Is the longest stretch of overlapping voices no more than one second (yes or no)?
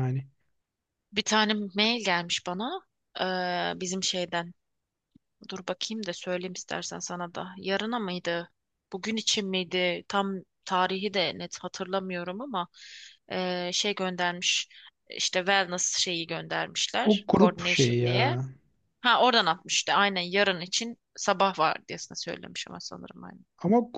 no